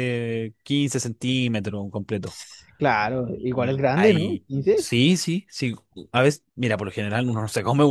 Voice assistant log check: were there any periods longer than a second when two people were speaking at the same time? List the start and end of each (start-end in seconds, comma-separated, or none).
3.4-4.9